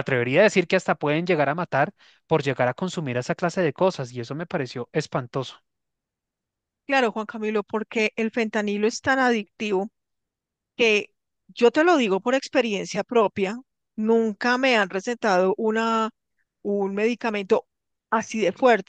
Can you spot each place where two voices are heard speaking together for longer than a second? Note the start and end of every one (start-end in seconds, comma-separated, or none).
none